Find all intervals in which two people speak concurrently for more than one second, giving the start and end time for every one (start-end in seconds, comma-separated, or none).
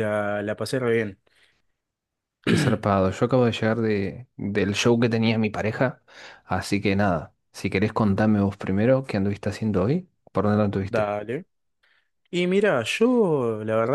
none